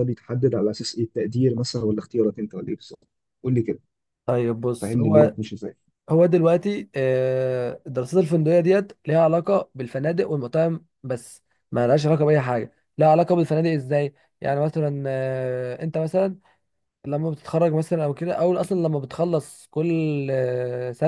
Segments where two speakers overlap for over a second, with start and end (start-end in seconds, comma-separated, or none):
none